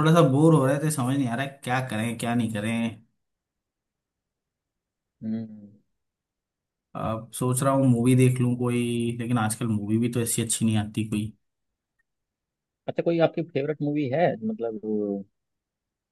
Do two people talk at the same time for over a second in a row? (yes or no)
no